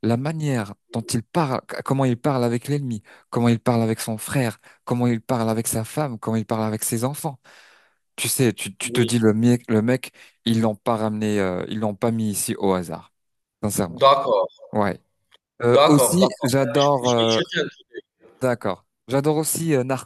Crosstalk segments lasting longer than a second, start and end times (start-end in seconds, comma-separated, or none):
15.7-17.4